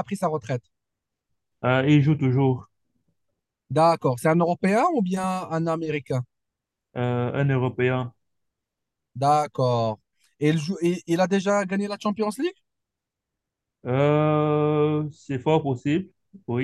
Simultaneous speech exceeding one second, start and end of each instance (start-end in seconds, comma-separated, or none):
none